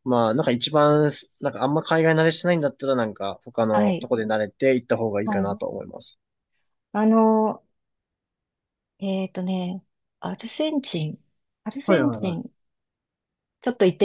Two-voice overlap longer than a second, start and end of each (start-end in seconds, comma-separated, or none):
none